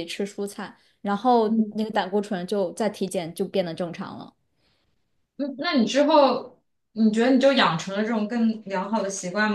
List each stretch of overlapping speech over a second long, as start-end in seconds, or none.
none